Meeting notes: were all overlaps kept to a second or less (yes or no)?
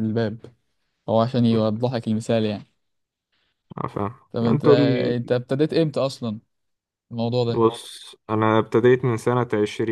yes